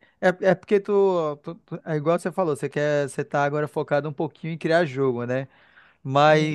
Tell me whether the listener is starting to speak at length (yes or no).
no